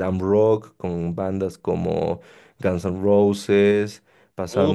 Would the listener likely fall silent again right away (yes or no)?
yes